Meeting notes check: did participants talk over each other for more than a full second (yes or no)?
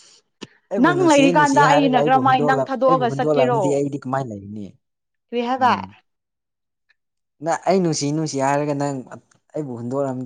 yes